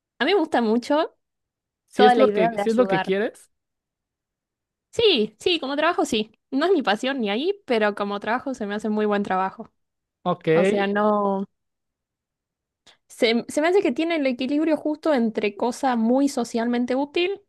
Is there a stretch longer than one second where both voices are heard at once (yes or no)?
yes